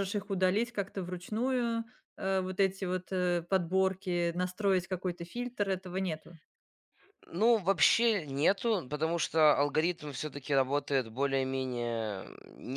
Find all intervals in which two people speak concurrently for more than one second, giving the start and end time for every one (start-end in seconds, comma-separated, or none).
none